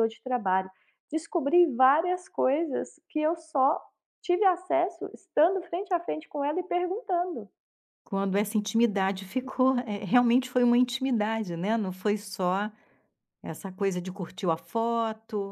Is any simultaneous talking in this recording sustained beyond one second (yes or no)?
no